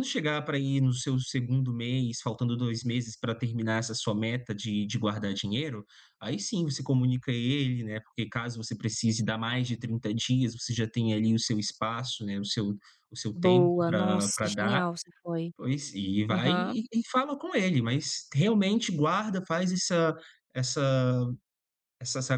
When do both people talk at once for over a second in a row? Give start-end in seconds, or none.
13.3-14.8